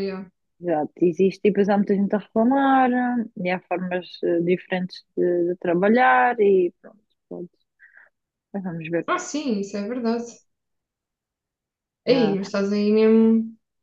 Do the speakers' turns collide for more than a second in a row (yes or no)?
no